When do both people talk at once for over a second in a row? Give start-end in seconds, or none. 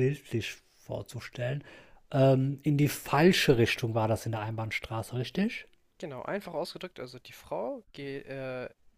none